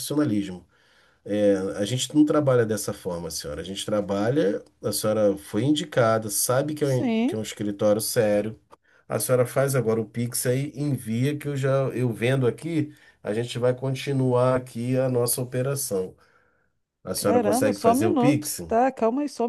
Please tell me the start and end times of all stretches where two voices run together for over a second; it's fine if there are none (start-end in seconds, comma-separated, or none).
17.1-18.6